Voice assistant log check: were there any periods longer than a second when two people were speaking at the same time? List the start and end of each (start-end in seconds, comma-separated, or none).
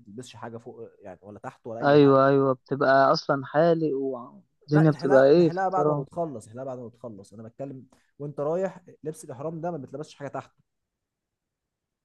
4.7-6.1